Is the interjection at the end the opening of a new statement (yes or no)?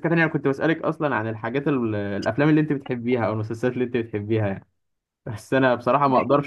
no